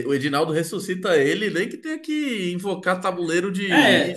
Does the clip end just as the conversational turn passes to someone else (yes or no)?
yes